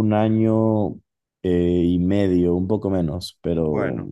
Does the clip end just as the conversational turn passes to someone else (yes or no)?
no